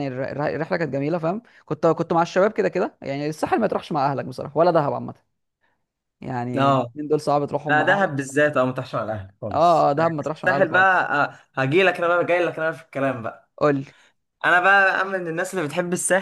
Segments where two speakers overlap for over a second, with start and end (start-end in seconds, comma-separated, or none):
9.5-11.1